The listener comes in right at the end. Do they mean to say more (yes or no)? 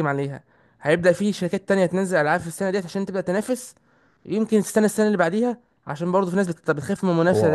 yes